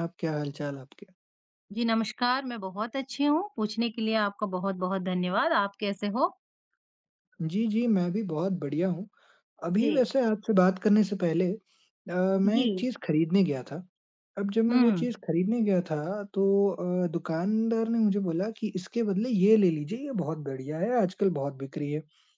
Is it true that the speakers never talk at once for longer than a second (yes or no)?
yes